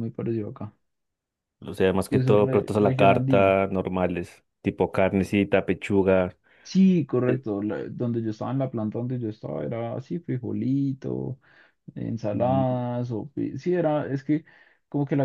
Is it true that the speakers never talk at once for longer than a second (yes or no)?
no